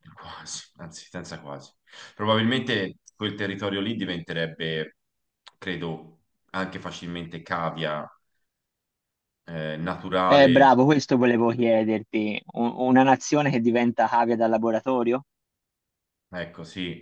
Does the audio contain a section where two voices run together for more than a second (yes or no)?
no